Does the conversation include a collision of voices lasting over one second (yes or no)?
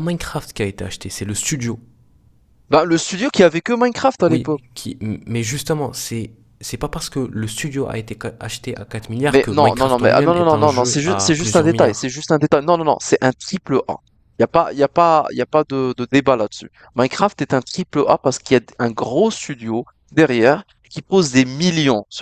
yes